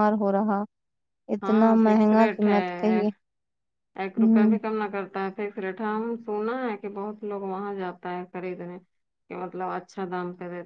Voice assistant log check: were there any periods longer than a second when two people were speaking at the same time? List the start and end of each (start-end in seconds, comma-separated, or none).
1.4-3.0